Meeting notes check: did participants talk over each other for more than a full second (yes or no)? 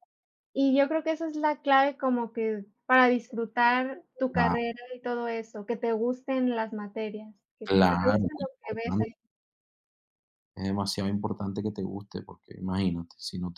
yes